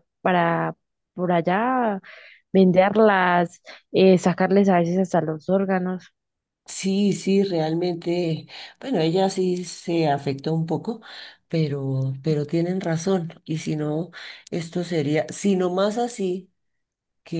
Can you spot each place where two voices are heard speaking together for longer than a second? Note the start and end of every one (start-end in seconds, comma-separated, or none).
none